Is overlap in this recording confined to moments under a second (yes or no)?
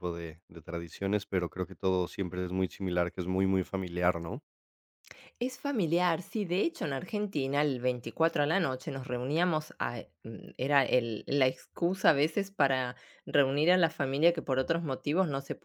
yes